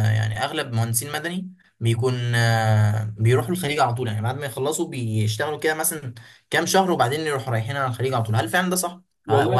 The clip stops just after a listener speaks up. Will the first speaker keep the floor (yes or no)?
yes